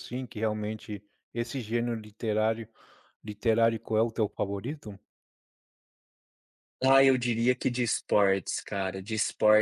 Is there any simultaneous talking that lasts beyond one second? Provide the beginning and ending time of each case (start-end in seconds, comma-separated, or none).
none